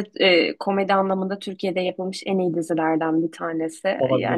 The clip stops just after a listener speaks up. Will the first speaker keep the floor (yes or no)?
yes